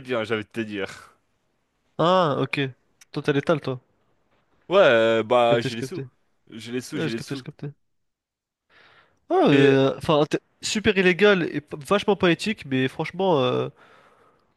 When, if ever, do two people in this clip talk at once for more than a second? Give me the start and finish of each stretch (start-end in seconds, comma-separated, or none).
none